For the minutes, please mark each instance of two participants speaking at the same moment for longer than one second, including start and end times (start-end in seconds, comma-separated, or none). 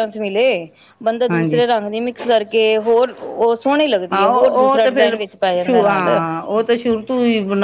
none